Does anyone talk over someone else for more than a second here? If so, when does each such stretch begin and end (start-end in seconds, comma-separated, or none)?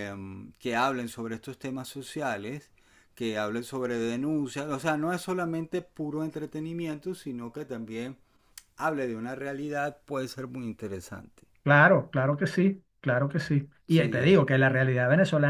none